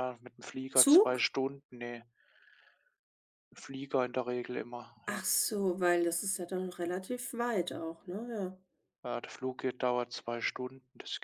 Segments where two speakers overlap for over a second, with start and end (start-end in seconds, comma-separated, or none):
none